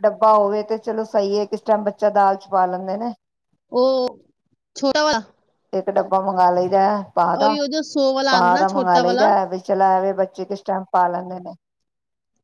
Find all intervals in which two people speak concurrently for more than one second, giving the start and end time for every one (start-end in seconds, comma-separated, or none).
none